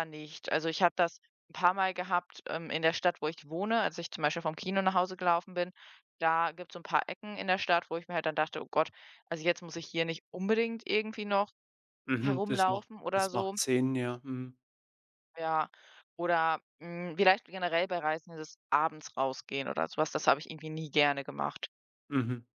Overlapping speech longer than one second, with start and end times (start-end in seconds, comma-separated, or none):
12.2-13.6